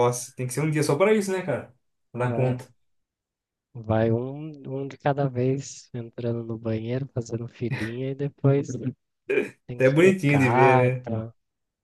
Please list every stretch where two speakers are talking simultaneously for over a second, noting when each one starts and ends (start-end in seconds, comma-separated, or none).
9.8-11.1